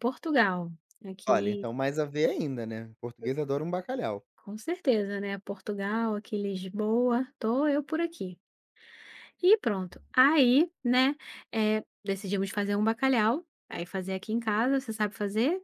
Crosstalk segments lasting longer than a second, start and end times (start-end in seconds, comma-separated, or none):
none